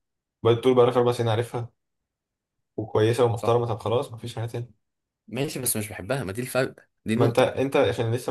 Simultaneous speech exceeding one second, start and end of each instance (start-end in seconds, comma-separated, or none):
none